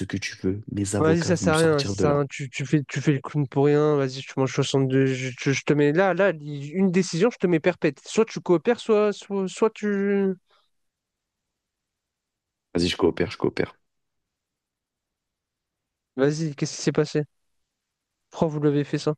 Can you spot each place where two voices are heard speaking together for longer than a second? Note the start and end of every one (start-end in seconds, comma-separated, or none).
1.0-2.2